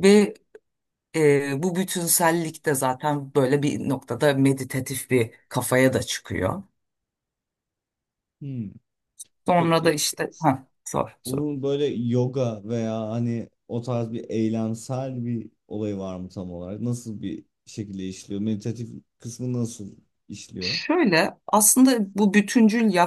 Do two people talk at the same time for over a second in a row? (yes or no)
no